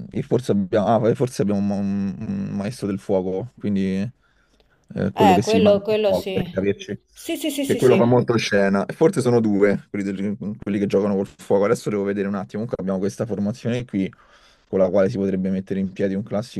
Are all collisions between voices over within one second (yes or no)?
no